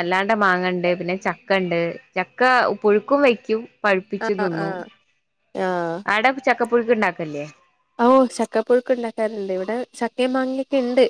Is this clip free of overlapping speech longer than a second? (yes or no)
yes